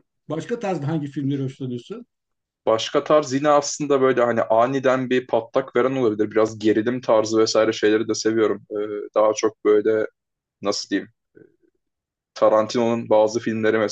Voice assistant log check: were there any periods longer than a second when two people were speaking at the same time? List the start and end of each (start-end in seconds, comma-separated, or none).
none